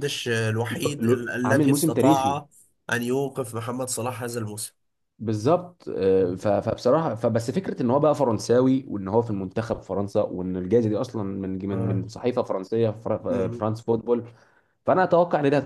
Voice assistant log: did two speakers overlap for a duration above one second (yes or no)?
yes